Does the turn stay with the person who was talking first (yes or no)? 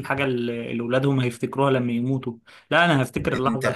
yes